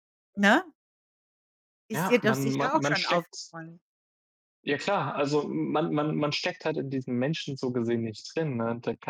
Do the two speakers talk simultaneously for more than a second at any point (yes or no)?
yes